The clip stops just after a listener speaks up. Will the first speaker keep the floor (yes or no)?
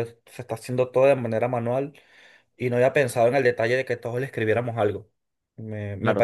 no